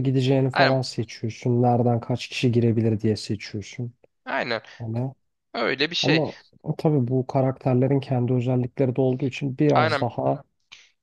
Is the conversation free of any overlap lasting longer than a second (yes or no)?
yes